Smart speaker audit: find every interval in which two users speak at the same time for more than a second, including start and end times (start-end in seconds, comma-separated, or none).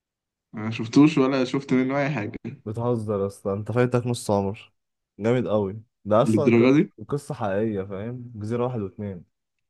none